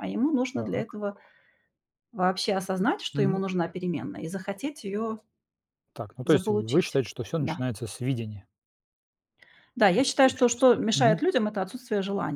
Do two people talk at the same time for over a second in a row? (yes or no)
yes